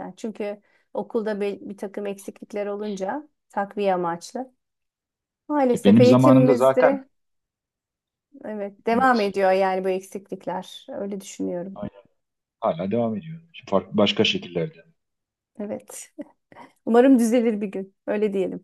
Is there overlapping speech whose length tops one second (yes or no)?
yes